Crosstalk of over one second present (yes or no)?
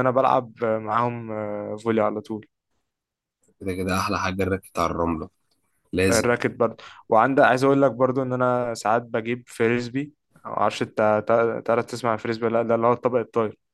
no